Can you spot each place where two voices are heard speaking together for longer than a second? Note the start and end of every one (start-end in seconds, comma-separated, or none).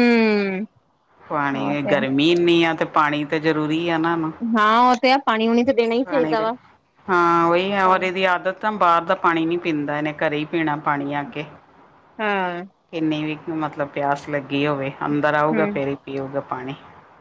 none